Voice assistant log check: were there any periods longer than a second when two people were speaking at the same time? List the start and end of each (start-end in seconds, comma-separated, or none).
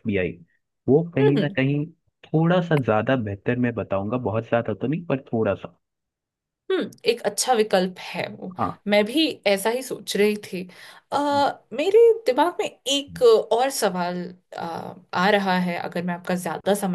none